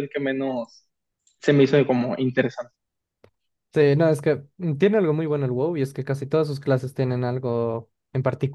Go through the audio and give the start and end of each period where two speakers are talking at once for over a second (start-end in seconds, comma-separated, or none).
none